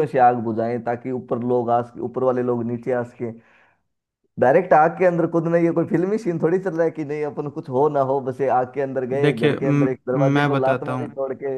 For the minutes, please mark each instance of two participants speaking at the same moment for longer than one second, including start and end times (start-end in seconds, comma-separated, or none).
9.2-11.1